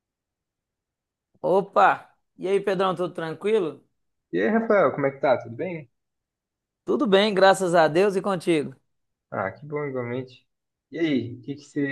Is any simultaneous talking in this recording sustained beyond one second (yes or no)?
no